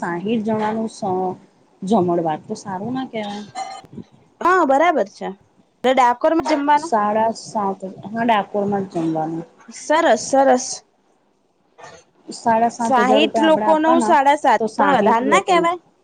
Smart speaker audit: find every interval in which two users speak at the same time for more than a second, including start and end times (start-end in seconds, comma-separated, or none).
12.8-14.1